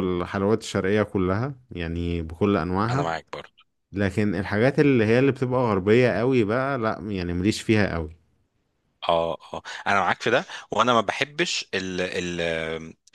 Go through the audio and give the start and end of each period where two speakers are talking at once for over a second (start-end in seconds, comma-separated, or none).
none